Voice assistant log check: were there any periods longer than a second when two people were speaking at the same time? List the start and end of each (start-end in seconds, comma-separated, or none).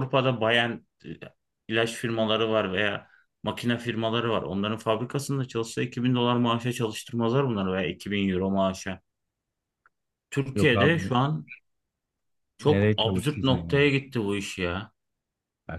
12.6-13.9